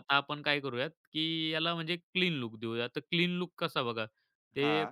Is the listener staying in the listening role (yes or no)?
yes